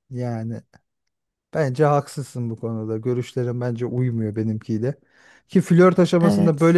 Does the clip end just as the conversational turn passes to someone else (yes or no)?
no